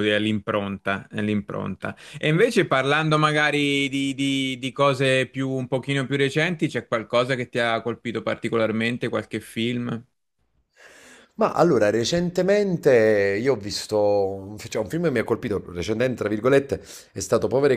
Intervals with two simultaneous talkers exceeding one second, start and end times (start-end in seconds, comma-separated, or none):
none